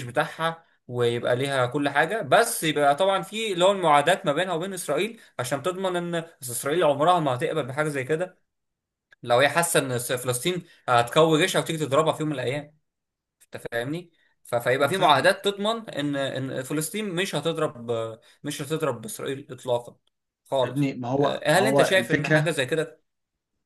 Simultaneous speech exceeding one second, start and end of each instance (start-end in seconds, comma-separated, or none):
20.6-22.5